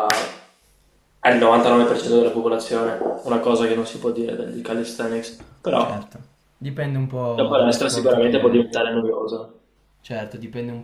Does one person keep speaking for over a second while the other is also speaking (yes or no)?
yes